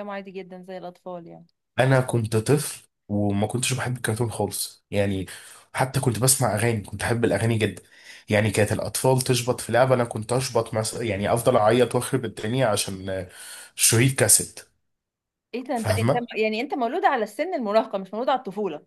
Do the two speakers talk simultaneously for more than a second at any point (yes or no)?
no